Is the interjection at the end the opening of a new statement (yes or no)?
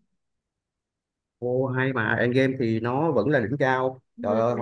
no